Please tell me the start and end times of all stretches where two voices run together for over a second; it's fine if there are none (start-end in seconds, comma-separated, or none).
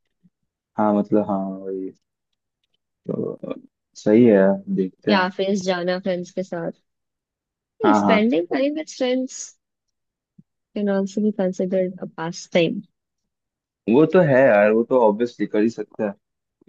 none